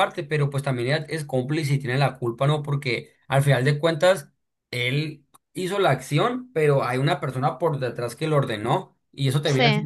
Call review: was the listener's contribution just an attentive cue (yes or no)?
yes